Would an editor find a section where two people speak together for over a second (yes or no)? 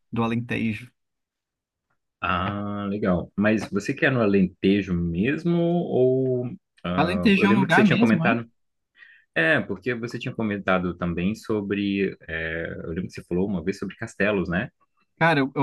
yes